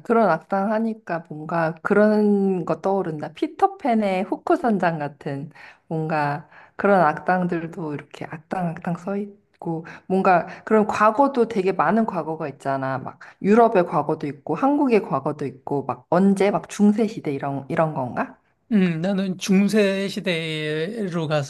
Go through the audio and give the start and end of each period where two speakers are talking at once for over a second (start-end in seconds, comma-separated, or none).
none